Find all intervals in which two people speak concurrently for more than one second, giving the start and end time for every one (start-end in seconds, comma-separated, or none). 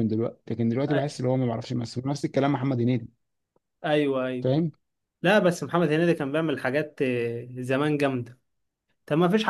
none